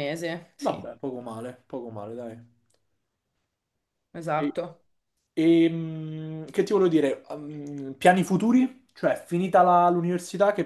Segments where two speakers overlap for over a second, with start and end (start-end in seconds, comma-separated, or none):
none